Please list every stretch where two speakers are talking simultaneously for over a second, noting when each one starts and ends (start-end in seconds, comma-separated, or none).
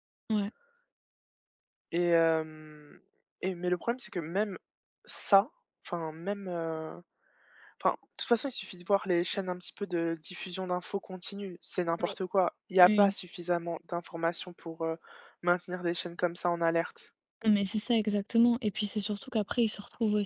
none